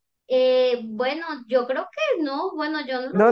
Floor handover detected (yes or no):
yes